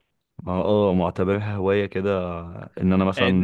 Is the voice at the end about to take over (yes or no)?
yes